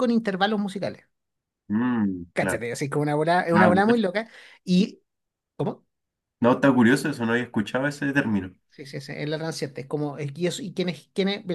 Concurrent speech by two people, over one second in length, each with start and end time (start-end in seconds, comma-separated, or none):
none